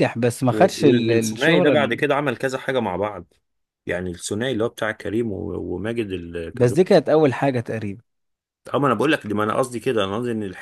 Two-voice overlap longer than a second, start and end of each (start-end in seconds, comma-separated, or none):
0.5-2.0